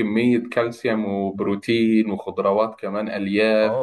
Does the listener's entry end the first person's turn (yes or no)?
yes